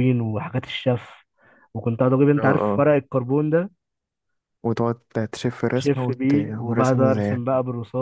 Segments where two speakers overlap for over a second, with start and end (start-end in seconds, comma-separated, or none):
5.8-7.4